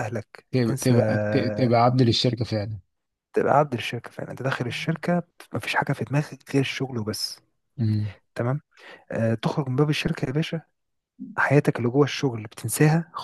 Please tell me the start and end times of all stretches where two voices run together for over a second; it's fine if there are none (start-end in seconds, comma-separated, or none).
none